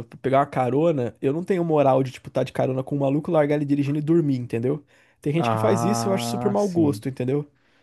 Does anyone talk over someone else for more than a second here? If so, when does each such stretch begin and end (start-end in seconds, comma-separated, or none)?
5.4-7.0